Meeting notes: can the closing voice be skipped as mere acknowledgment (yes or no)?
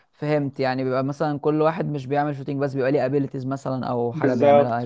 no